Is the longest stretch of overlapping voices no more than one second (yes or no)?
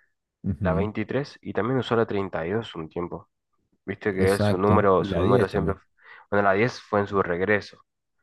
no